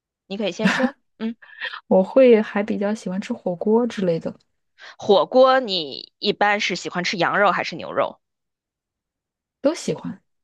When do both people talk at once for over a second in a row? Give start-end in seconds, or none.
none